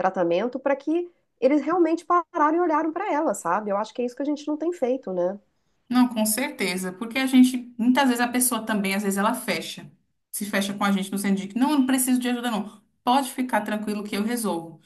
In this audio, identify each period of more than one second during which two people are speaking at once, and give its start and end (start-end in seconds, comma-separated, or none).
none